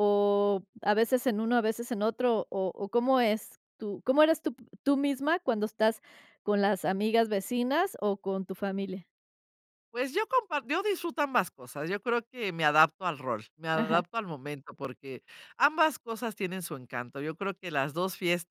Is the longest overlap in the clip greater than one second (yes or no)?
no